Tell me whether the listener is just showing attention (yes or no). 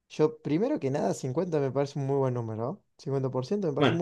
no